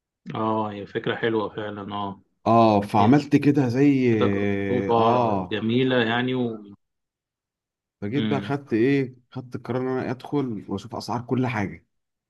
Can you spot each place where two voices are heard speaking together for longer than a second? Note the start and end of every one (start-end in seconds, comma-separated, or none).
none